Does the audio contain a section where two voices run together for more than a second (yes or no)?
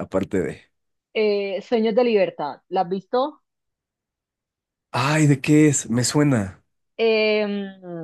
no